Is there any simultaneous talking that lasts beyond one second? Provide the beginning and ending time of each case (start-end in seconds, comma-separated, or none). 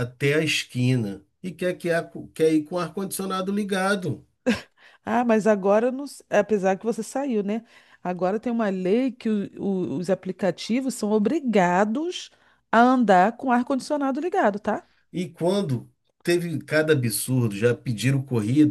none